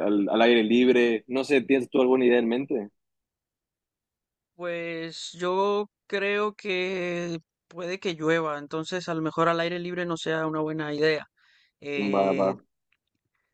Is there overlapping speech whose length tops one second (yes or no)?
no